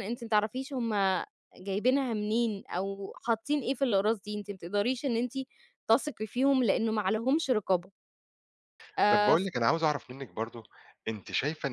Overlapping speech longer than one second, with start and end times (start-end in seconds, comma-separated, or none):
none